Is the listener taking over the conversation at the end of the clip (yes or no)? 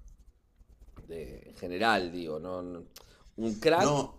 no